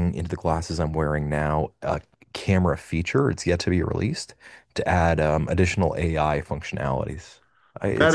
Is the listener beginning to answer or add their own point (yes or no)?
yes